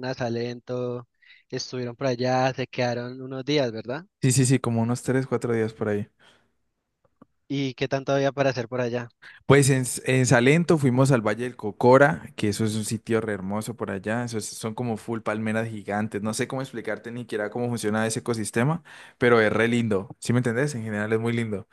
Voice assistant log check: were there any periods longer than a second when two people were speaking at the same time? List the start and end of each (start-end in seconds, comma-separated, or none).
none